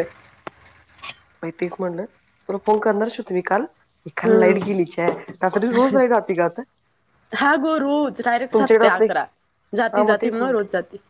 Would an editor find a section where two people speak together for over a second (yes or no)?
no